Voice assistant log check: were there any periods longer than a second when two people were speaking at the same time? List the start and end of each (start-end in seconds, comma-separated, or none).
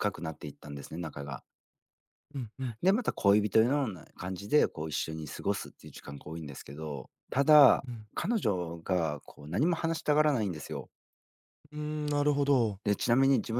none